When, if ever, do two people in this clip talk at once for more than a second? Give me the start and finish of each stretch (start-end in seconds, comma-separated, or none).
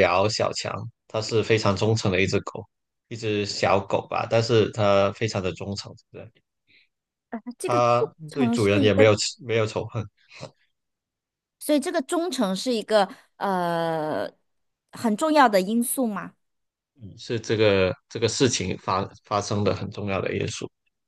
7.6-9.0